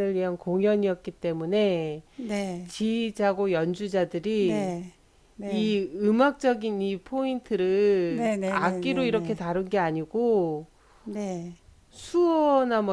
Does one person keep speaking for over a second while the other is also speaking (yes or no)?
yes